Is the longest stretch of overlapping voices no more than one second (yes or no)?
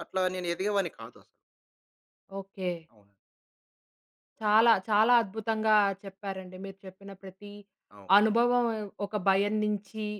yes